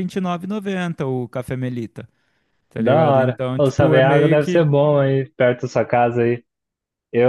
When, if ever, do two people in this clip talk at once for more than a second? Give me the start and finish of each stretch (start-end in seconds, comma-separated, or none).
2.8-4.7